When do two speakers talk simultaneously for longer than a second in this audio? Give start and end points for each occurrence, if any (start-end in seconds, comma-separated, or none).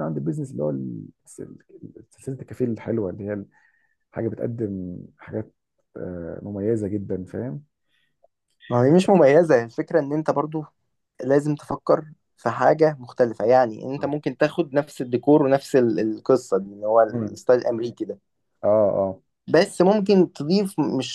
none